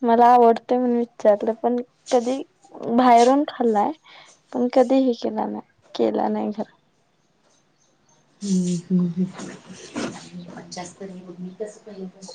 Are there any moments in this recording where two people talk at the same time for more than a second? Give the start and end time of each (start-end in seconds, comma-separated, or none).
none